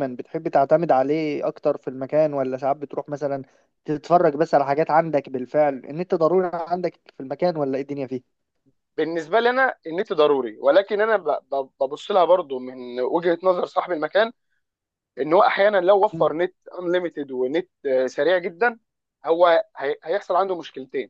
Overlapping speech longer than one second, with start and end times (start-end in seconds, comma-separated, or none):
none